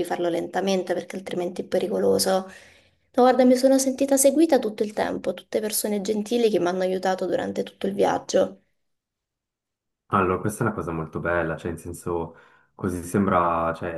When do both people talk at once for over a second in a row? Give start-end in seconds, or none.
none